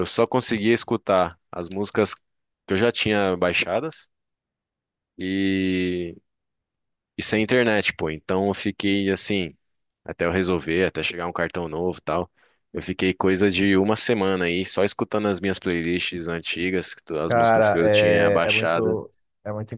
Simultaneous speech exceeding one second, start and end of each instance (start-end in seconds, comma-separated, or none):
17.3-19.0